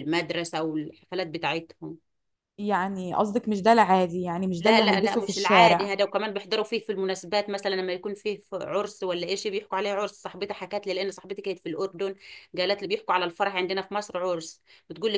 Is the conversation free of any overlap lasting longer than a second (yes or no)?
no